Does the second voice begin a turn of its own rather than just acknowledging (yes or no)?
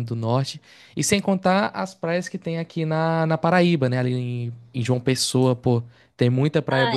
yes